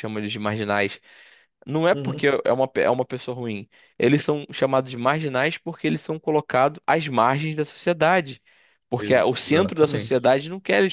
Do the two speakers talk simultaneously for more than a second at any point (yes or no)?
yes